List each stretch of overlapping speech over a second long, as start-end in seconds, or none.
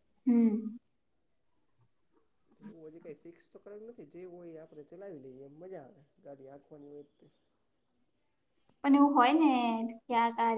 none